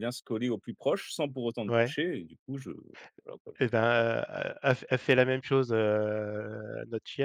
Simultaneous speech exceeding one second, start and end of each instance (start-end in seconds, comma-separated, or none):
none